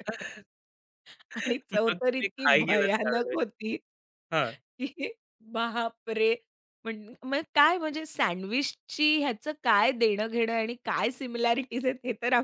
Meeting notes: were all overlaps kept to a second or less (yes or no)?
no